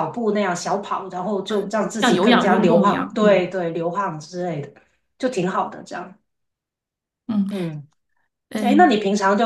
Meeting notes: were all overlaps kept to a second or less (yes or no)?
no